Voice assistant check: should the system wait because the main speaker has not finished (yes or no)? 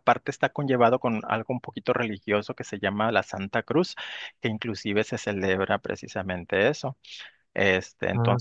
yes